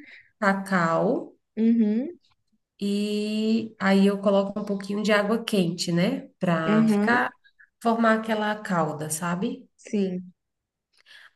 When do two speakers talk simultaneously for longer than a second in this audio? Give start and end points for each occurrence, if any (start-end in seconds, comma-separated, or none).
none